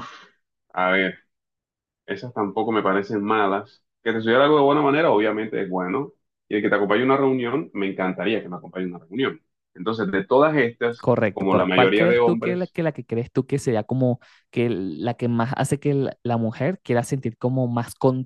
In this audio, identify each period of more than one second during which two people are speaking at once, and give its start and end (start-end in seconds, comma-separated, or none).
11.0-12.8